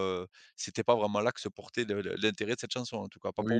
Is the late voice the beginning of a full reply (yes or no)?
yes